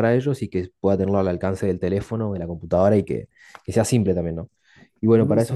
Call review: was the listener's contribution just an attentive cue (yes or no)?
yes